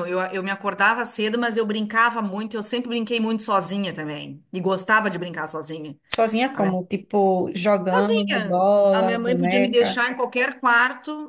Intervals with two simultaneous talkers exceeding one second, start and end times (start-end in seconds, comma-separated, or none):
7.9-10.1